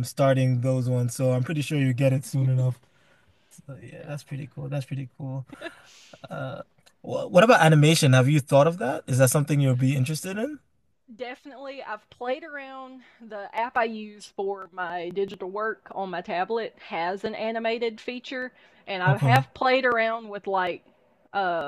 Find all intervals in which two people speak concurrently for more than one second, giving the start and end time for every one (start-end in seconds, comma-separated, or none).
none